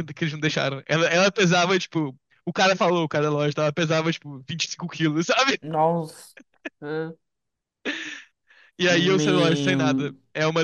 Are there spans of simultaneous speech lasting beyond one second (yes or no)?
yes